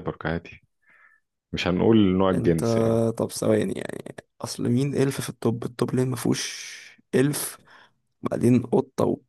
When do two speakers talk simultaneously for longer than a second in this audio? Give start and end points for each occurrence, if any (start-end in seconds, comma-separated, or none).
none